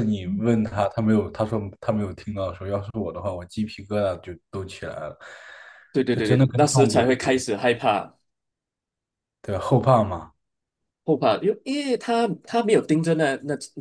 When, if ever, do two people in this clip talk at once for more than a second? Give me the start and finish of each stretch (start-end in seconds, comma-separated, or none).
6.1-7.4